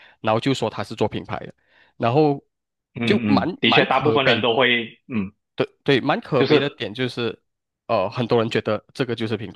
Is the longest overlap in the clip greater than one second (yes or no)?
yes